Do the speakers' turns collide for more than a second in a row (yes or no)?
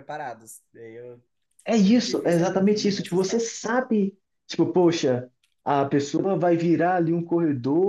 yes